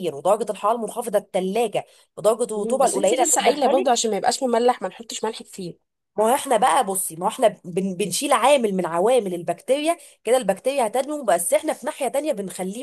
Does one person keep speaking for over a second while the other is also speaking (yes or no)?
yes